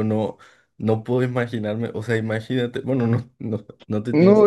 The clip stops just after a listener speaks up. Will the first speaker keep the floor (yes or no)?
no